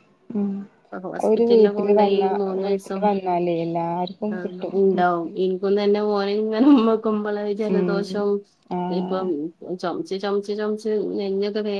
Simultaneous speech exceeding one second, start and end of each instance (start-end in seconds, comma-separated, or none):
1.3-3.0